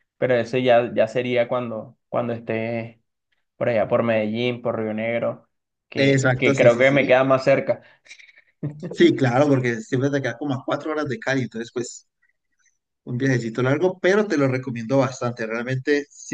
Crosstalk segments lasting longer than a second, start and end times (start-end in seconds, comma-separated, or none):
6.0-7.2